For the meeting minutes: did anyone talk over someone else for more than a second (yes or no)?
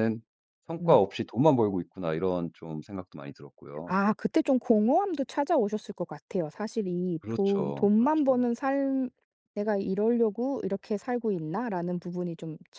yes